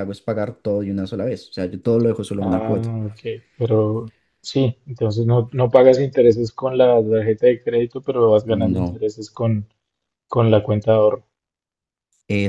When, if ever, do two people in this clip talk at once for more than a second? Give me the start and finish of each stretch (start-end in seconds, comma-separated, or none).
none